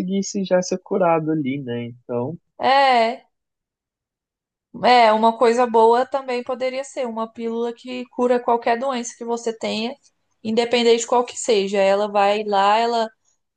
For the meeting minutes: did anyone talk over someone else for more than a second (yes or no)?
no